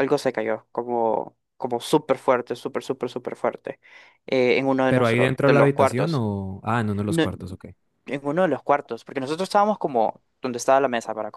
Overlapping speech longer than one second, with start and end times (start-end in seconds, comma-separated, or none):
4.9-6.2